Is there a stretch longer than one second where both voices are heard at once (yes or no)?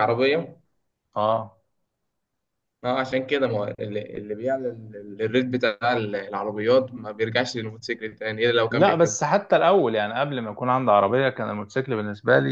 no